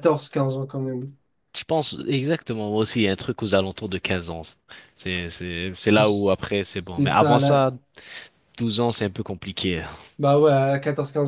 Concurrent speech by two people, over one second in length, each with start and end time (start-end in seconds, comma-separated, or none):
5.9-7.6